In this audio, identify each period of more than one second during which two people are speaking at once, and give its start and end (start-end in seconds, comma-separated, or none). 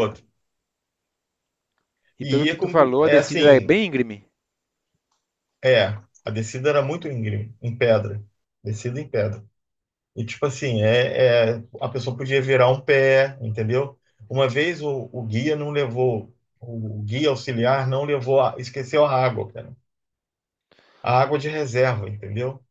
2.2-3.8